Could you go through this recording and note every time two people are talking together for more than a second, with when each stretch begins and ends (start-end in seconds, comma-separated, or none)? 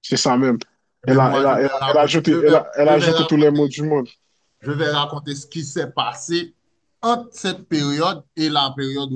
1.1-3.6